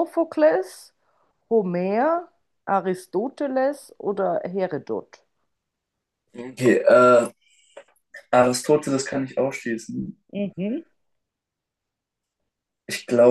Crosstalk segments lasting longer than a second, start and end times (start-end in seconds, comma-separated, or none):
none